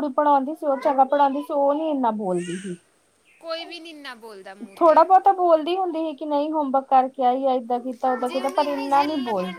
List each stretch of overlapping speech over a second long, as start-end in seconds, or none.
none